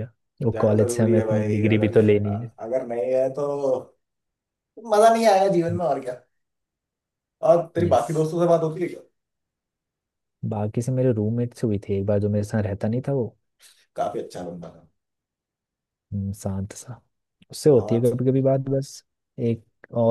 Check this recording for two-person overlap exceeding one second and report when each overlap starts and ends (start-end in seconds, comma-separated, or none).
0.5-2.3